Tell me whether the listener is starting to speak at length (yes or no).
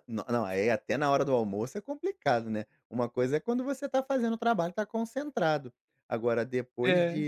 no